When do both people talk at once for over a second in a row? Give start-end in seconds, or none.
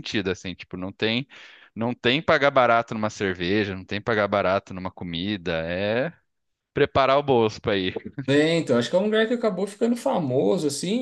none